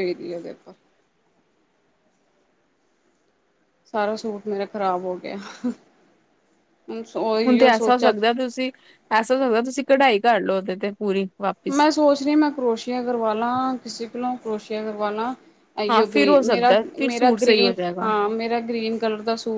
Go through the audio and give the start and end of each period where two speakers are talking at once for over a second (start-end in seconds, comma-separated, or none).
15.9-18.1